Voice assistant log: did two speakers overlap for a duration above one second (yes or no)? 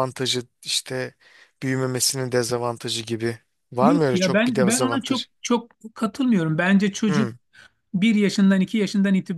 yes